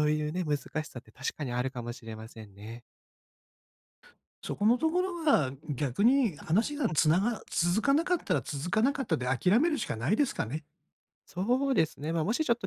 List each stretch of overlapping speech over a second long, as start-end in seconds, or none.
none